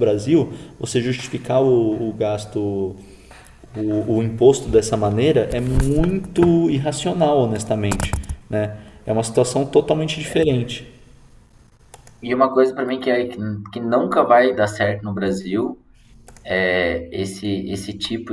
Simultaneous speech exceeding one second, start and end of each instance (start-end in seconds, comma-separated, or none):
none